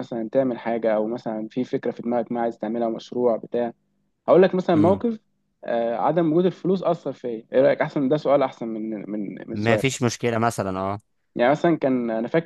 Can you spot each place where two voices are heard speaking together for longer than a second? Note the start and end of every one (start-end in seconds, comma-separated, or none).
none